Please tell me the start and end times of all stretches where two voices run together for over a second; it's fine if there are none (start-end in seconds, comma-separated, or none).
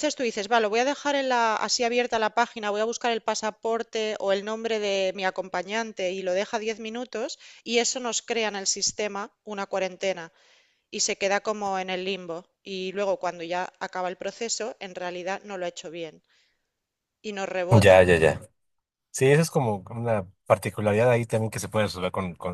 none